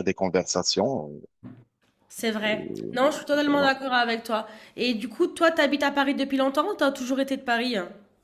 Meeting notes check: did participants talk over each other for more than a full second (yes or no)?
no